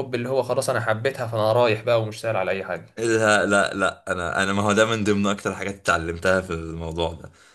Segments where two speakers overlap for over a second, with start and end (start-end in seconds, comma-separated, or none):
none